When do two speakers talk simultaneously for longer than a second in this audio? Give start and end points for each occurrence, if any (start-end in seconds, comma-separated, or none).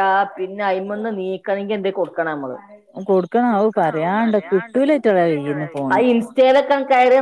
3.5-6.0